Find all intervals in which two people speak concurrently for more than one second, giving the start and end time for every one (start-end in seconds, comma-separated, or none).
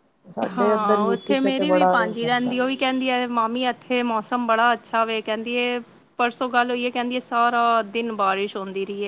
0.6-2.6